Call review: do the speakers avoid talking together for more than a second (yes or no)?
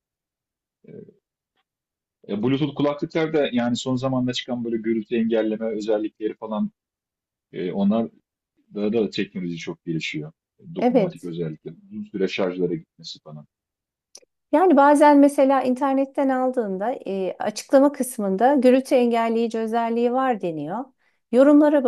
yes